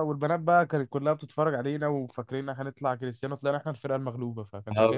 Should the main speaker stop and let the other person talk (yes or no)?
yes